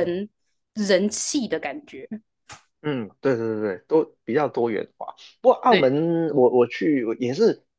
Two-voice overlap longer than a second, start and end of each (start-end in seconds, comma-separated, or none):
none